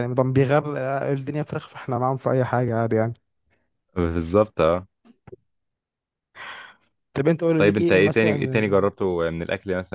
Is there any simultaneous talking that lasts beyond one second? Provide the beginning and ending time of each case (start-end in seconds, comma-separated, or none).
7.6-8.9